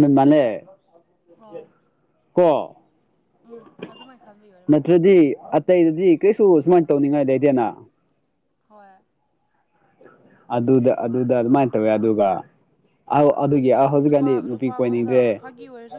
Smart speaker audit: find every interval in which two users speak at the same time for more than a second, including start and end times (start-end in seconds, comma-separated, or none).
13.6-15.4